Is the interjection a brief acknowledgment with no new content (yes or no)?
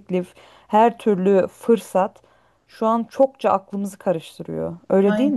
no